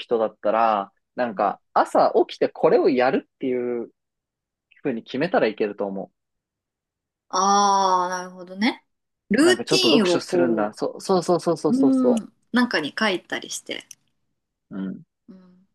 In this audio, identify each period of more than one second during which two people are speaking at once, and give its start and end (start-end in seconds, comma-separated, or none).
9.4-10.7